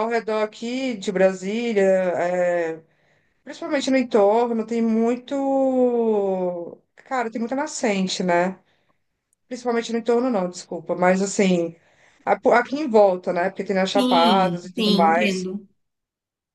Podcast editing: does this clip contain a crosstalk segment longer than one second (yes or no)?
yes